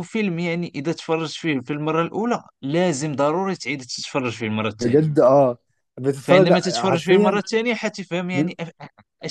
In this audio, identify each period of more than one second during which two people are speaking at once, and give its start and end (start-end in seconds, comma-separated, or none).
6.2-7.4